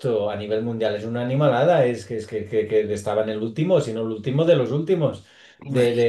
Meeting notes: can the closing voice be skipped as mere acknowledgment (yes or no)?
yes